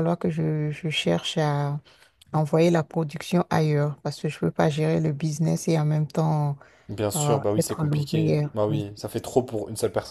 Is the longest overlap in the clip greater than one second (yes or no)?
yes